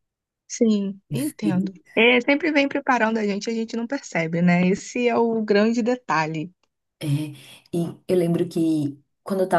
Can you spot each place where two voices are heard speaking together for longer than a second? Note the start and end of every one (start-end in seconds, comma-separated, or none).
none